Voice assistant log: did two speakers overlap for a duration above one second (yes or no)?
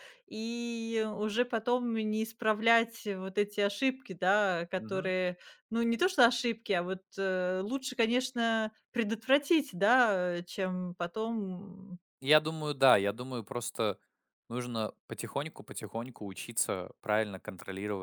no